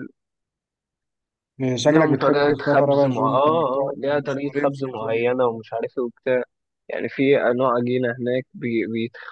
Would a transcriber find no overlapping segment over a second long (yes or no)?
no